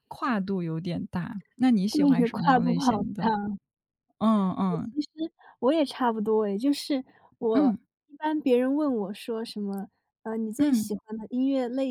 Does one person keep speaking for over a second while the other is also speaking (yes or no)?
yes